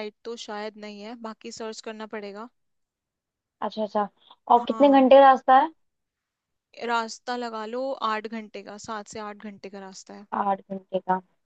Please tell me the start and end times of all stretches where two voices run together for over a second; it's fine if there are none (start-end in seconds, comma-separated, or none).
none